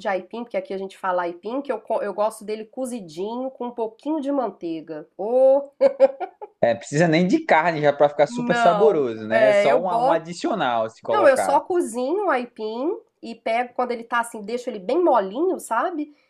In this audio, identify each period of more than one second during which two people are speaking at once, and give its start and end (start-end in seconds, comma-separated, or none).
8.3-10.2